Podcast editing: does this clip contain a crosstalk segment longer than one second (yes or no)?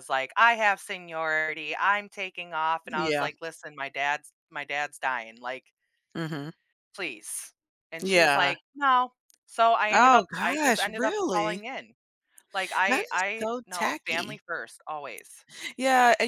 yes